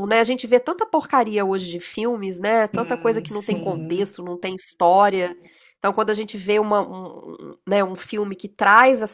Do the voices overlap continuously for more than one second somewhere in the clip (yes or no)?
yes